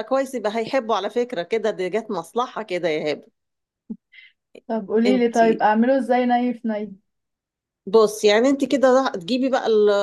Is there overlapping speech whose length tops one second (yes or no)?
no